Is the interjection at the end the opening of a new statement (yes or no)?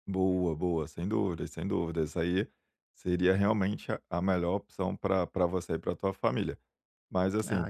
no